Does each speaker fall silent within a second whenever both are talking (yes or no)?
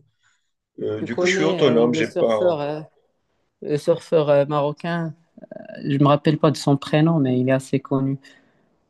no